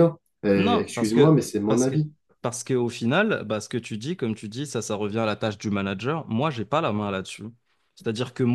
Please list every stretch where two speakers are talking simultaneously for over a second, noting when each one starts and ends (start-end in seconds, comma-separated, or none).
0.6-2.0